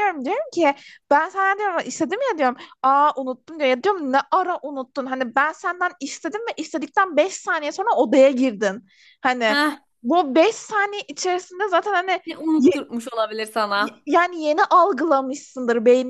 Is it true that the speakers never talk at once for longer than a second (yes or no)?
yes